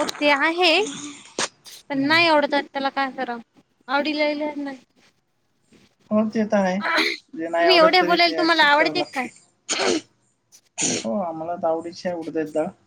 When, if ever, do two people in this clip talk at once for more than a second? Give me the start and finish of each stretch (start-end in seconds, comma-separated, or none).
7.6-9.3